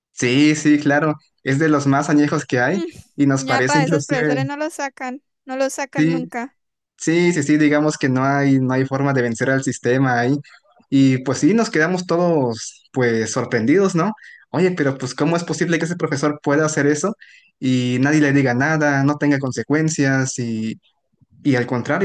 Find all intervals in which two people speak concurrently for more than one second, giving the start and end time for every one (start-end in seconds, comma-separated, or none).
2.7-4.5